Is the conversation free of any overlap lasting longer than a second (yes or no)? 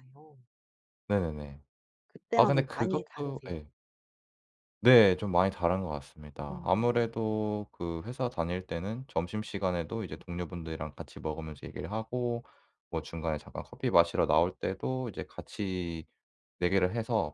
no